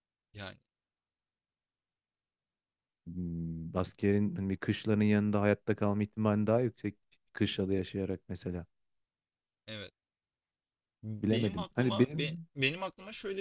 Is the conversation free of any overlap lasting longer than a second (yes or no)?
no